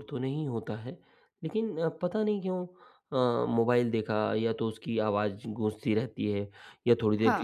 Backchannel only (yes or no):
yes